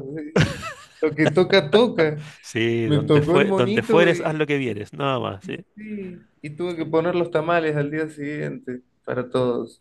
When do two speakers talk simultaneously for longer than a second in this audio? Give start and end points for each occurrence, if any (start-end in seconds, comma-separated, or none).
2.8-4.4